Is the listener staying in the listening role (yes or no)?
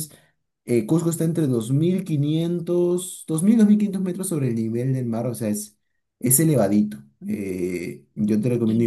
yes